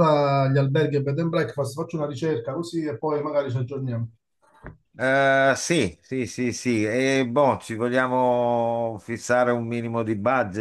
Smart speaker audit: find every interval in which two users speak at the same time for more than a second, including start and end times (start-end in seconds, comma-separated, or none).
none